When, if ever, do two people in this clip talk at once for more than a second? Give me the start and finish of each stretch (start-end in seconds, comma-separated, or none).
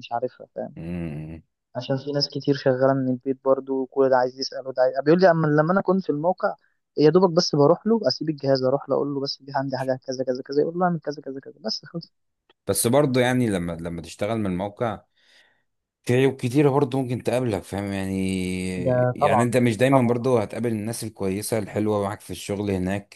18.8-20.3